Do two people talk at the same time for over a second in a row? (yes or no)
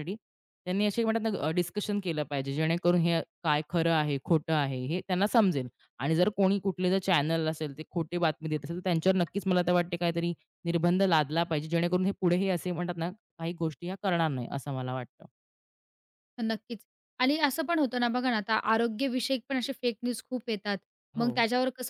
no